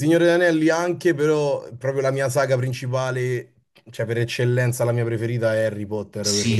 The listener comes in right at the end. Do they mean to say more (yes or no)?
yes